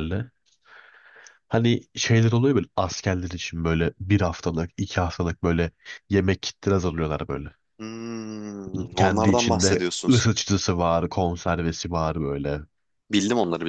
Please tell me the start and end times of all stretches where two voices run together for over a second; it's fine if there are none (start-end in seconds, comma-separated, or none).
8.9-10.3